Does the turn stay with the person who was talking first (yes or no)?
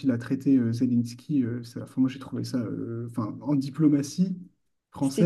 yes